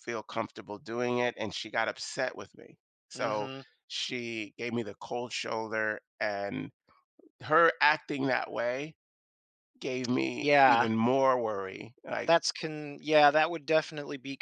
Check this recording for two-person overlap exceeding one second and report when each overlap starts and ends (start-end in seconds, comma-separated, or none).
none